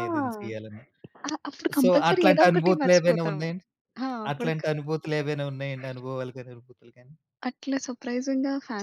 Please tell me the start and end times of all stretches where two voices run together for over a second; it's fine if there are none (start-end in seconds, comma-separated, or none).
1.8-3.4